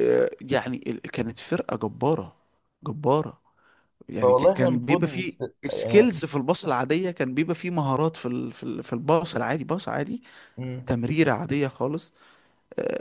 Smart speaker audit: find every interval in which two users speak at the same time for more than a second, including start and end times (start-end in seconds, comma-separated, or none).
4.2-6.1